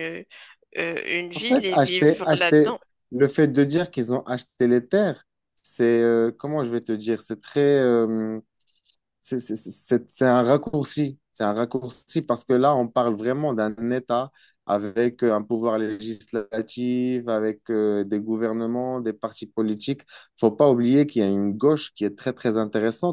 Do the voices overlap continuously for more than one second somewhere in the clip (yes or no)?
yes